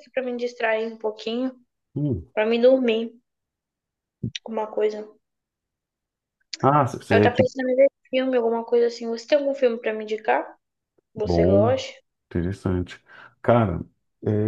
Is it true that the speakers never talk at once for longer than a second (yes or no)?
yes